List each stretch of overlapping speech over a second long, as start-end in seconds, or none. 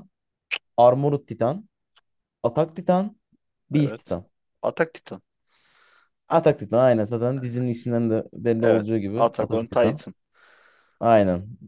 8.6-10.0